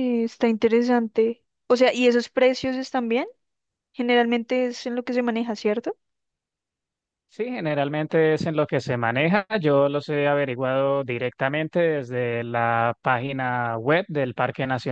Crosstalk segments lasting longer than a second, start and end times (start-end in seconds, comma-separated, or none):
none